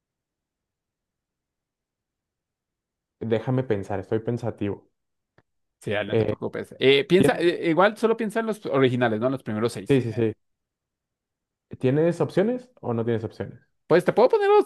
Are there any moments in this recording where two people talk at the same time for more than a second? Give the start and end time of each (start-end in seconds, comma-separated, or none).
none